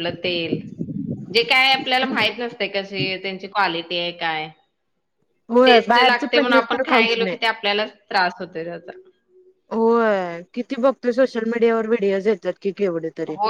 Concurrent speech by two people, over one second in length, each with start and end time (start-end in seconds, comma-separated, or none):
5.7-7.4